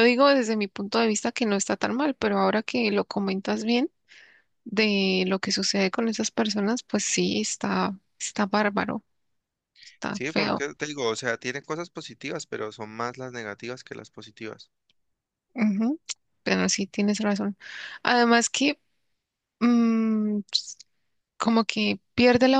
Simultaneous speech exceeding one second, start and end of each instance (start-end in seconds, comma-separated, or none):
none